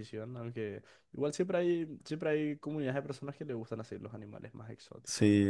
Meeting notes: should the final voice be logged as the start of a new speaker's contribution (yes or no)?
yes